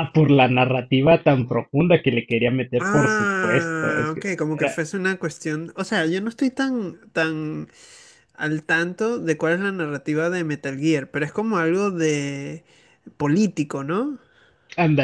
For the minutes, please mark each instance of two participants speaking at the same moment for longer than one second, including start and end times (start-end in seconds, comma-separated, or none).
2.8-4.8